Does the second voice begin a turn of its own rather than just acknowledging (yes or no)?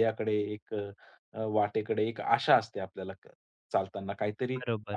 no